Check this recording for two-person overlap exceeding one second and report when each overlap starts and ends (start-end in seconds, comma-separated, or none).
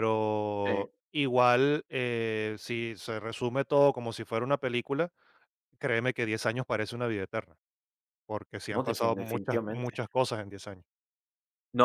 8.8-10.0